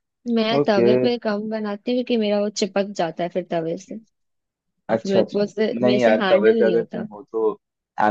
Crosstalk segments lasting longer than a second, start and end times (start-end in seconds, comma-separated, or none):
4.9-7.1